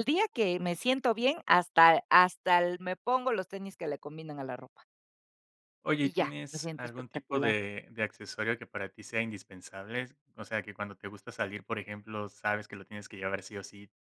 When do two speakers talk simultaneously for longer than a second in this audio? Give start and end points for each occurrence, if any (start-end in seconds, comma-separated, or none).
6.0-7.6